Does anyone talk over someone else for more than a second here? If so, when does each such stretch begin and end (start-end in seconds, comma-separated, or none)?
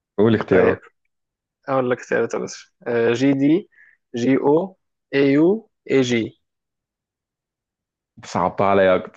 none